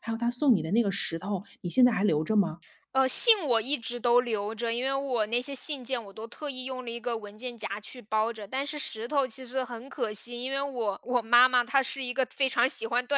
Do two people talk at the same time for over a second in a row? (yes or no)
no